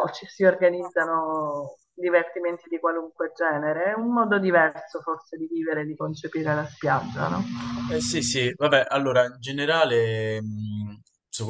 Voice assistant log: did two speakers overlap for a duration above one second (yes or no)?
no